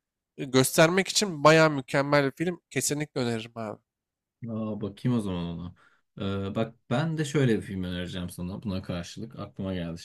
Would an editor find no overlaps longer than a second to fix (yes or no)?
yes